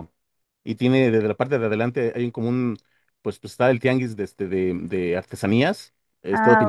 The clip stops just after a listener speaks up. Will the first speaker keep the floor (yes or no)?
yes